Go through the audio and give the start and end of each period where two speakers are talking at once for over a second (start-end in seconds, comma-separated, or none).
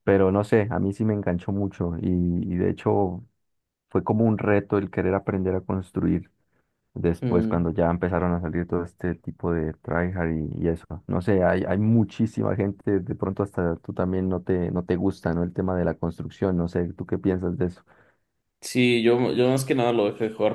none